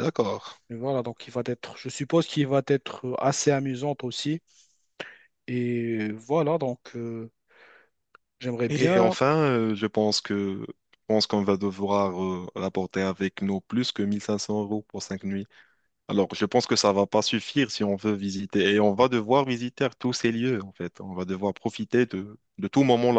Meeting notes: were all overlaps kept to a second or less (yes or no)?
yes